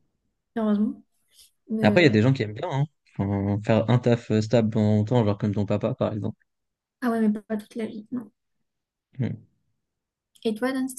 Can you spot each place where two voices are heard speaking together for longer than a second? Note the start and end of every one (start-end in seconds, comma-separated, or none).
none